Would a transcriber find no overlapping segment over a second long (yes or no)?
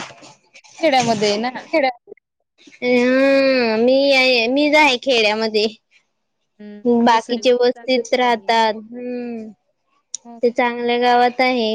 no